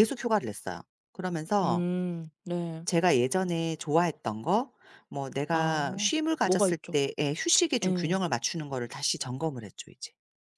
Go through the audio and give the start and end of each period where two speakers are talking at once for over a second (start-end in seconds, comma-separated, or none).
5.5-7.0